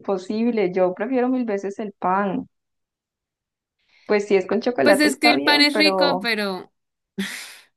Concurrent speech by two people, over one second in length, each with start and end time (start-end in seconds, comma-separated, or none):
4.8-6.3